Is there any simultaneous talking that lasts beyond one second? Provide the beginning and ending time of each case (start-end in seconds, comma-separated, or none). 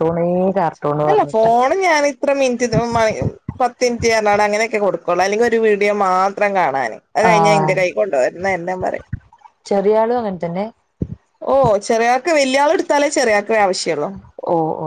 none